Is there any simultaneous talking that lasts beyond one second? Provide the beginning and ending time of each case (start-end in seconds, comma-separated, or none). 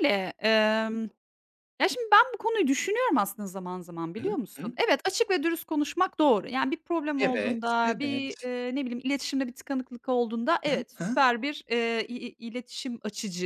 7.2-8.5